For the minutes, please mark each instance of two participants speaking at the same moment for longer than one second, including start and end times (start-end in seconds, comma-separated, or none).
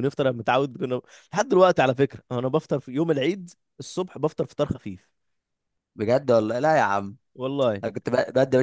none